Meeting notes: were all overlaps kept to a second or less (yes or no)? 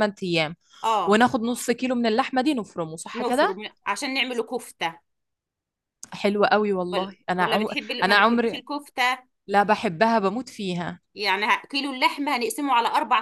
no